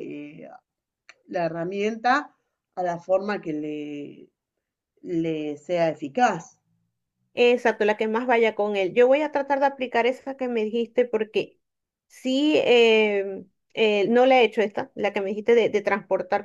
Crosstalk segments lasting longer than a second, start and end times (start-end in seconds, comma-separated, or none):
none